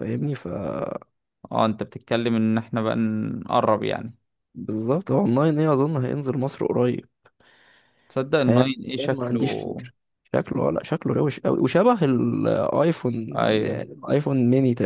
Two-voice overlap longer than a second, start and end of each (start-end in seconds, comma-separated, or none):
8.4-9.8